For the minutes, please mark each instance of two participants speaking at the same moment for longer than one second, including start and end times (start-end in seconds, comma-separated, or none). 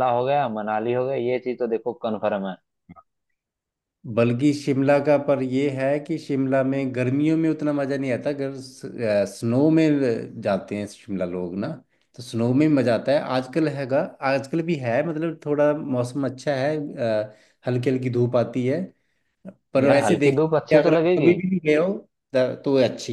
19.8-21.3